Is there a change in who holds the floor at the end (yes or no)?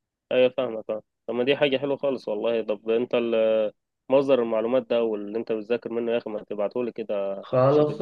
yes